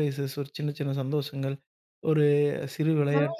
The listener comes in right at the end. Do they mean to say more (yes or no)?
no